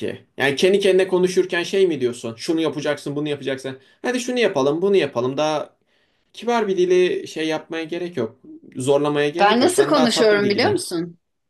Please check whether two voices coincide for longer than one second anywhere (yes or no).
yes